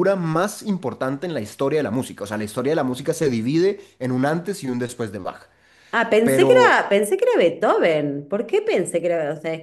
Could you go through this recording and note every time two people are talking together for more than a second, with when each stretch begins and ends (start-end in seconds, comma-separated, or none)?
none